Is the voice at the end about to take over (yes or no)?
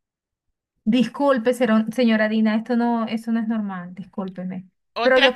no